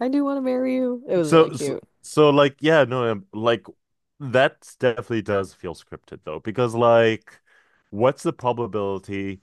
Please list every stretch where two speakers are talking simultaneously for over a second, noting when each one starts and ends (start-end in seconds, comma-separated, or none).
none